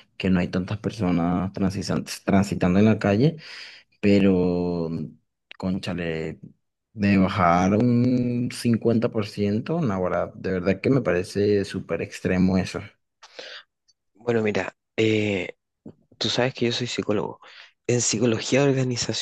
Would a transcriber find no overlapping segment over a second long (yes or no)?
yes